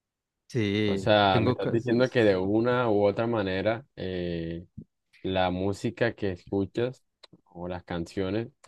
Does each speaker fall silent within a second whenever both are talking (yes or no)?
no